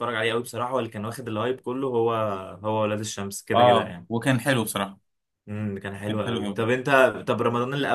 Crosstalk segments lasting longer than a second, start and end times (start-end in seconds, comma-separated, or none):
none